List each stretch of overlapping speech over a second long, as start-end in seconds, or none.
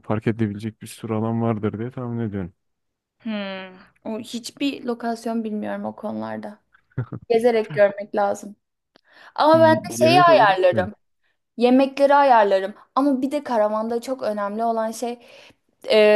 9.5-10.9